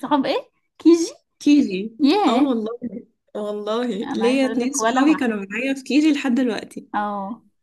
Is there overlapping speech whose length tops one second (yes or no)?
yes